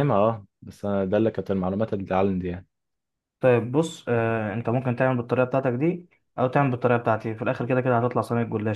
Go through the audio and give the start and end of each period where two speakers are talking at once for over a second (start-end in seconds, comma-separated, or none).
none